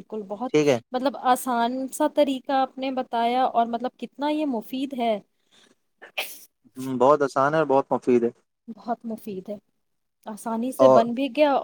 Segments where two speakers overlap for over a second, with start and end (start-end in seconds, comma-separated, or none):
none